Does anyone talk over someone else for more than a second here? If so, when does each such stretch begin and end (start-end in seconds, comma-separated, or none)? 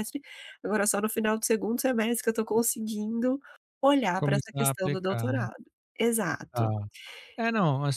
4.2-5.5